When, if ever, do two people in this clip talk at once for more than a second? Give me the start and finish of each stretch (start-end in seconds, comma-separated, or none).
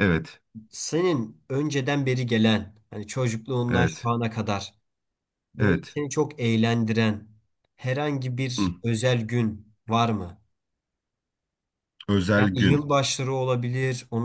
none